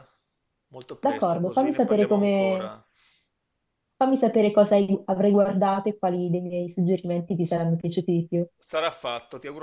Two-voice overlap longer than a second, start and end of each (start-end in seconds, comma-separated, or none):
1.0-2.8